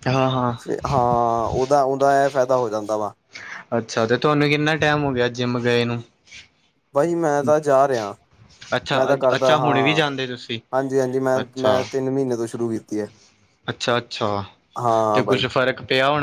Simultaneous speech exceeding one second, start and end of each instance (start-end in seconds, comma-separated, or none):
none